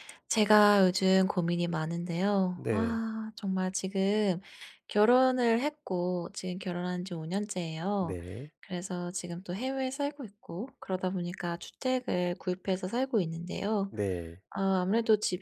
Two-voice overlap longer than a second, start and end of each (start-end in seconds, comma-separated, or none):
none